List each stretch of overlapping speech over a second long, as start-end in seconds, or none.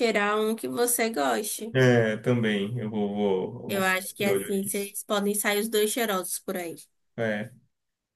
3.7-4.9